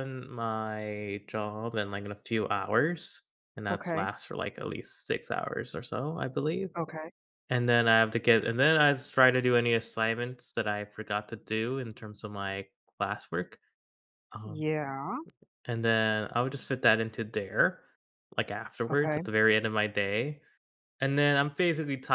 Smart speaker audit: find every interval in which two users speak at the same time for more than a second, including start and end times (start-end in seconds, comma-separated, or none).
none